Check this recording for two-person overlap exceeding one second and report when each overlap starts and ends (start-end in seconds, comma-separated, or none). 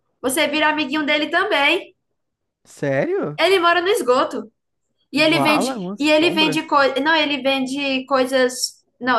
5.1-6.6